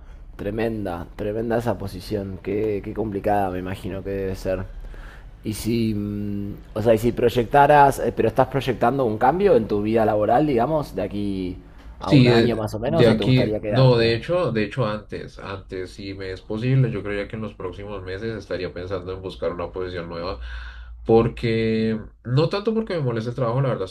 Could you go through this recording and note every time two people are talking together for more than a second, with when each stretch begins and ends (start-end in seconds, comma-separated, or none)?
12.0-14.1